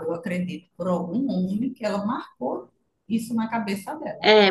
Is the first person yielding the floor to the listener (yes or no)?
yes